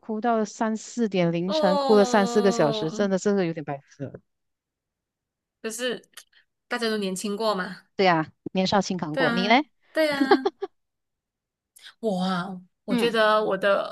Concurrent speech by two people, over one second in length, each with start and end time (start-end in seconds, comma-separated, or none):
1.4-3.1